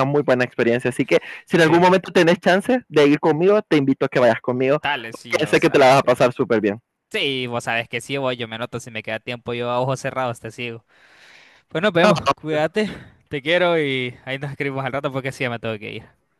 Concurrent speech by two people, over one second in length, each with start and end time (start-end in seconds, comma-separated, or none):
4.7-6.2